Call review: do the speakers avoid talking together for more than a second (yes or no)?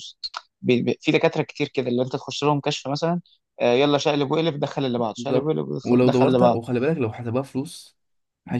no